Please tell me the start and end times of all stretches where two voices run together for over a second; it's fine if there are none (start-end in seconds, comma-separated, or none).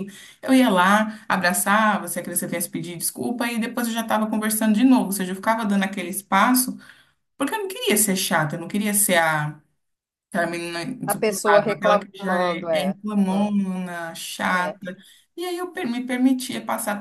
11.1-13.0